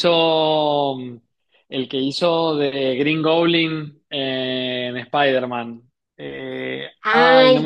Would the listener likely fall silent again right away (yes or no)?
no